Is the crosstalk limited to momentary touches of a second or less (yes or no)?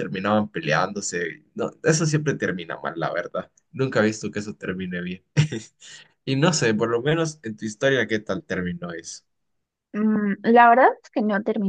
yes